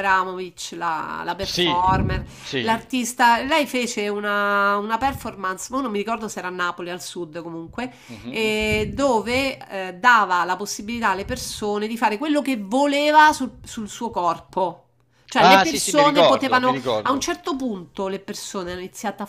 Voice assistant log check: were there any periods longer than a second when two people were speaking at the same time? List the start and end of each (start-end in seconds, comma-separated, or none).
15.4-17.2